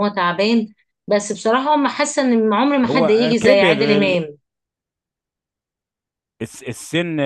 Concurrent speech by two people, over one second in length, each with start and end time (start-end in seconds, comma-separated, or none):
2.8-4.2